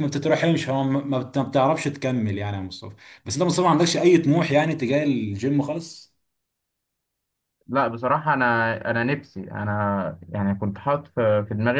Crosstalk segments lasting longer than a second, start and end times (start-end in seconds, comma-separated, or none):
none